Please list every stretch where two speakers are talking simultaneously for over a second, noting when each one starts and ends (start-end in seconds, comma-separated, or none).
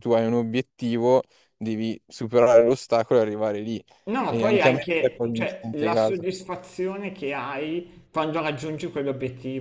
4.3-6.3